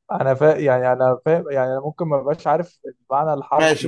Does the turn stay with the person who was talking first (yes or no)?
no